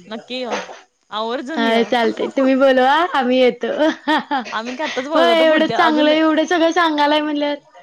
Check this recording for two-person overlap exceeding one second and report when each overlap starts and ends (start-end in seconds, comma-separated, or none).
5.2-6.5